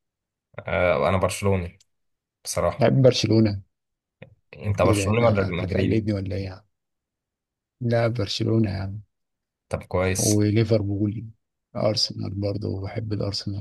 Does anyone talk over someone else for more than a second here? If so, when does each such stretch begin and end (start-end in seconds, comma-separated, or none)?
4.8-6.1